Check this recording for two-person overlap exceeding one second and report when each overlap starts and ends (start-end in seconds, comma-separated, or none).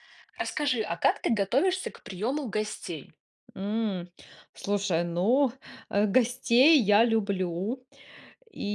none